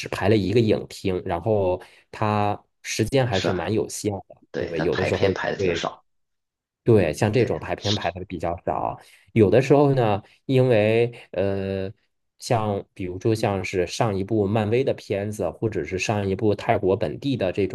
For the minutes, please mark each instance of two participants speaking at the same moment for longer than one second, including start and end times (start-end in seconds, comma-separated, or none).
4.5-5.9